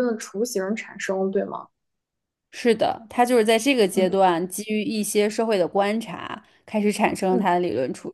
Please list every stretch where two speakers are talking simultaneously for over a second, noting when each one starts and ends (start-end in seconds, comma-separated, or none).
none